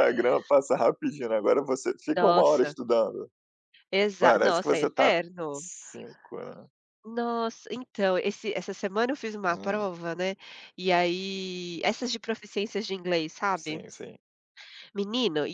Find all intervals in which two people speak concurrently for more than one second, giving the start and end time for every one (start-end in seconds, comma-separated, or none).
4.2-5.6